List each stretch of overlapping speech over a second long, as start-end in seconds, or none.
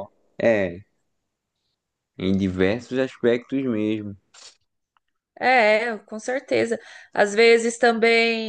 none